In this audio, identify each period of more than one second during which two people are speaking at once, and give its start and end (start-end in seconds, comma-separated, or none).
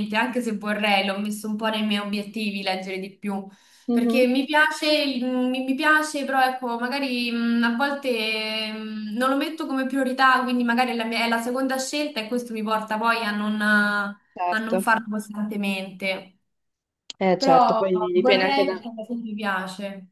17.4-18.8